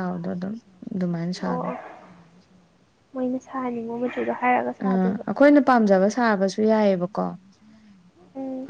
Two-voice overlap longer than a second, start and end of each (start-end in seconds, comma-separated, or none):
none